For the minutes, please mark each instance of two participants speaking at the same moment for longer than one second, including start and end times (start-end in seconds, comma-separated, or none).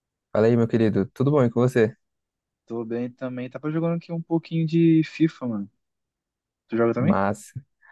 none